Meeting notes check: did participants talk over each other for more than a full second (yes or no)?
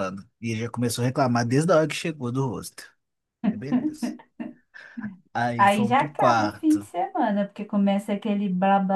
yes